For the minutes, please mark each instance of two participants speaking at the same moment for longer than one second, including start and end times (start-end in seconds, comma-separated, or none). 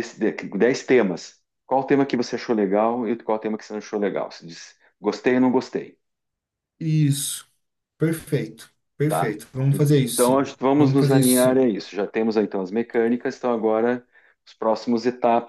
10.1-11.7